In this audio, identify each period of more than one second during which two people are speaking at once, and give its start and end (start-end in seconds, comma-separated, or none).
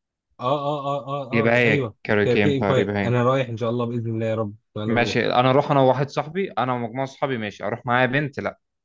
1.3-3.1